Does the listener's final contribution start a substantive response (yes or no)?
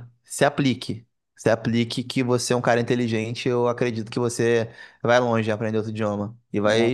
no